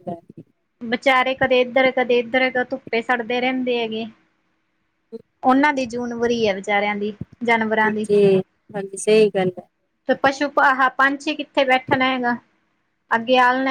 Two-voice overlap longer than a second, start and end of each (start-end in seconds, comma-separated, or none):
none